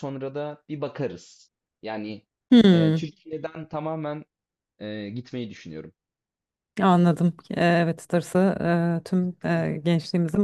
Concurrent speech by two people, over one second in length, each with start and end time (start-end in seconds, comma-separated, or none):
none